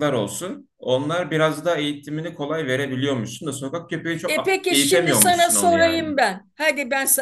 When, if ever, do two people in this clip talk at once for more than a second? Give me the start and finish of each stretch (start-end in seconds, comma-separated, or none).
4.3-6.1